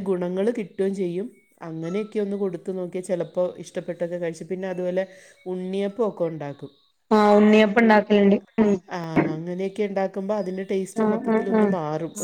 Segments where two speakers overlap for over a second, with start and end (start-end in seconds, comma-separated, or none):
none